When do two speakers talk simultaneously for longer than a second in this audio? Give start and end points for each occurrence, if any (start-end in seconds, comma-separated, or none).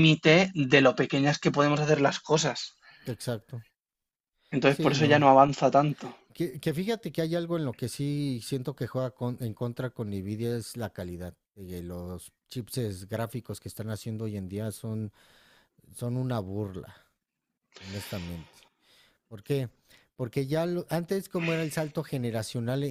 none